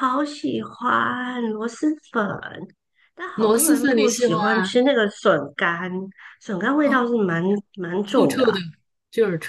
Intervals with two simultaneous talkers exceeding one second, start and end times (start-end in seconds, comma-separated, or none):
3.3-4.8